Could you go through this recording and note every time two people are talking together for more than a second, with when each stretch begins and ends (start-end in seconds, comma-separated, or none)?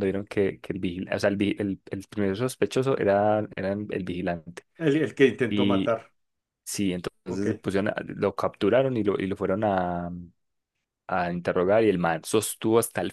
none